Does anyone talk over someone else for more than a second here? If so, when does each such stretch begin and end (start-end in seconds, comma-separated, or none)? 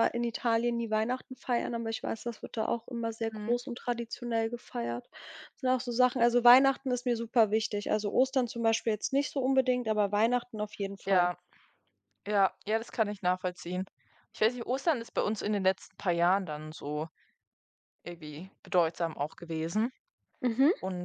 none